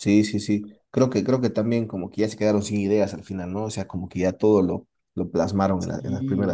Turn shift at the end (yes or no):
no